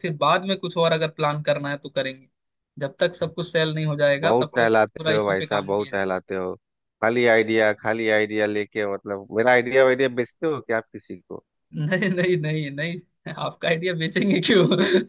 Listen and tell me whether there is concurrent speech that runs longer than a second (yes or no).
yes